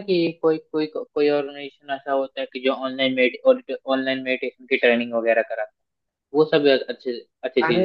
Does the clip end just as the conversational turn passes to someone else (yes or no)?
yes